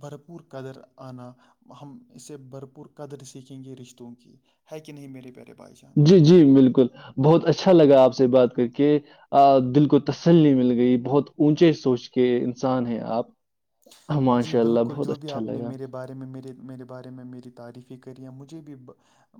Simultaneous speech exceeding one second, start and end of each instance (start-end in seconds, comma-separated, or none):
14.4-15.7